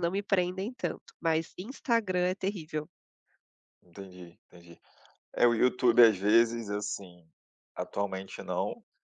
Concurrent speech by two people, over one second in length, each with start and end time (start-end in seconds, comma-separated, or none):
none